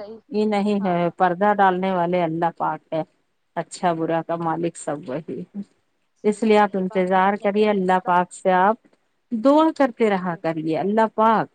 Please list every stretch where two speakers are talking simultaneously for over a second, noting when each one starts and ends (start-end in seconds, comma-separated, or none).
6.3-8.2